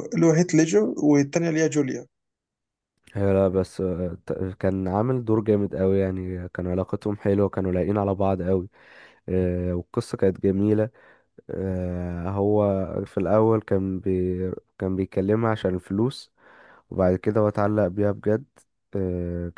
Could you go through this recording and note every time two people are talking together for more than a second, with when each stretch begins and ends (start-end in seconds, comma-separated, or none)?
none